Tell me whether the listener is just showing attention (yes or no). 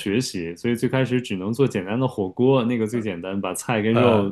yes